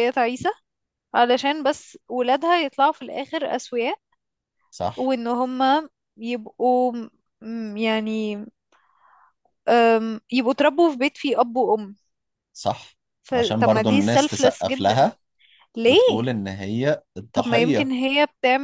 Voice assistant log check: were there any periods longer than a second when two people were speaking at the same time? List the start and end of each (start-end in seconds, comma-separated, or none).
13.3-15.0